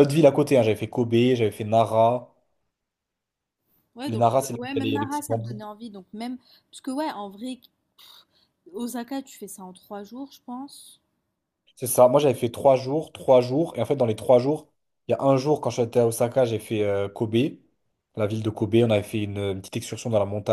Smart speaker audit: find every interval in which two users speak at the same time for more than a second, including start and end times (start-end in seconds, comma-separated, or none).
4.1-5.6